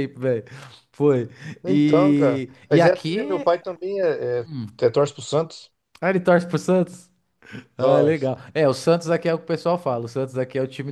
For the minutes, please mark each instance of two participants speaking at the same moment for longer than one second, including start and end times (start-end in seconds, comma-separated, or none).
1.6-3.5